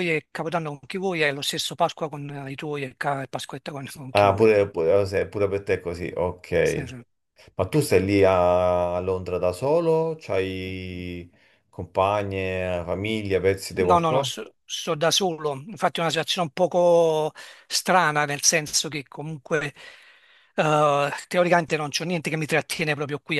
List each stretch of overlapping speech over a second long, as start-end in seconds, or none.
none